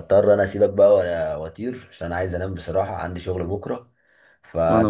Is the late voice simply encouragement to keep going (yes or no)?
yes